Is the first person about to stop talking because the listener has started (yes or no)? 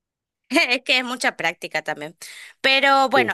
no